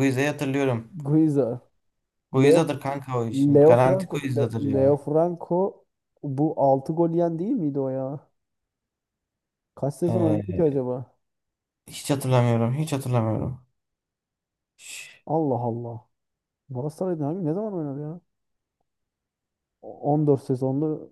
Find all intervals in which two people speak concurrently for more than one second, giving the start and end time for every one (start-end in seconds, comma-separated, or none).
3.3-5.0